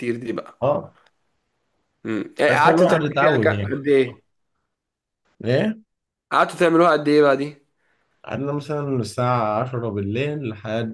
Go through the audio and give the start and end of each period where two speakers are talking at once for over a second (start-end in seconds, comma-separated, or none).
2.5-3.8